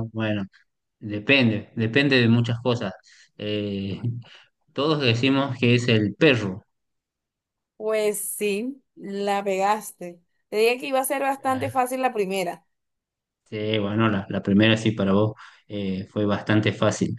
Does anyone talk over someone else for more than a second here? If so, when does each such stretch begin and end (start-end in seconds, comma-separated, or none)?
none